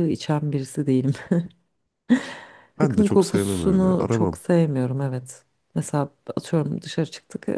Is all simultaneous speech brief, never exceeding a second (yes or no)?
no